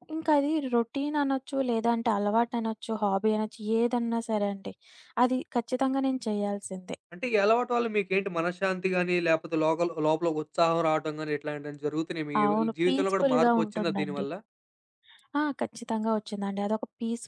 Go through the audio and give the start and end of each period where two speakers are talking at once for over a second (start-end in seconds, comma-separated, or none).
12.8-14.2